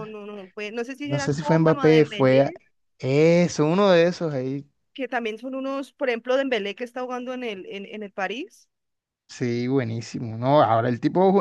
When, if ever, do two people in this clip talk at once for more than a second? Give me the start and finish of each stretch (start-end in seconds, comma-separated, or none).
1.0-2.5